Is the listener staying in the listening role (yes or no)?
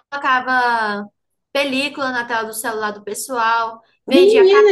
no